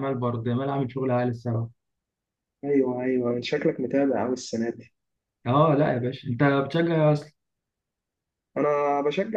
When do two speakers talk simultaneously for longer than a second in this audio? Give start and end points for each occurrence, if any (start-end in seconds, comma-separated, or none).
none